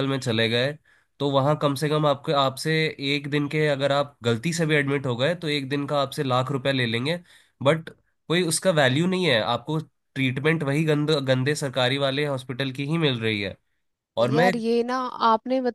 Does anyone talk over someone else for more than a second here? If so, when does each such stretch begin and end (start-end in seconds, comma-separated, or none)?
none